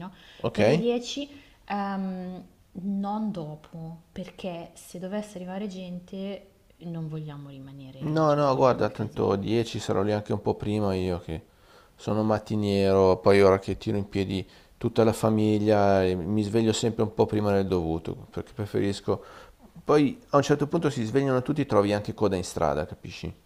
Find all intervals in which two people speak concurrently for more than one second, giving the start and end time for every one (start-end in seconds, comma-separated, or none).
8.0-9.4